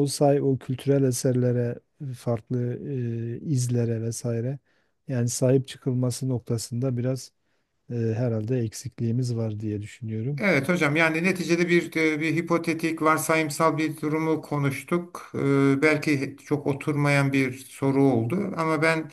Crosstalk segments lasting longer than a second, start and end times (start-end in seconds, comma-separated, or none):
none